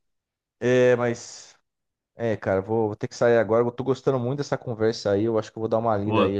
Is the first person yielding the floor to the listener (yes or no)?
no